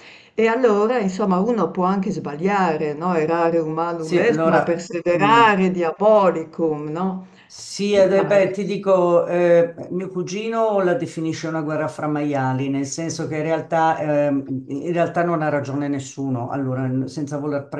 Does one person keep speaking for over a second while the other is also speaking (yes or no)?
yes